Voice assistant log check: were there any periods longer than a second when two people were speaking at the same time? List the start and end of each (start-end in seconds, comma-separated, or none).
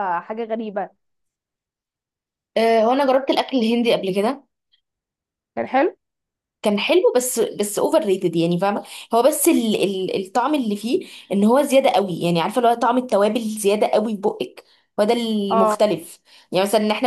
none